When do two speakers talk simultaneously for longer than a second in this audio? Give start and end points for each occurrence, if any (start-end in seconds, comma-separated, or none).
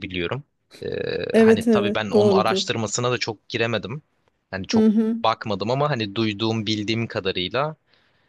1.4-2.6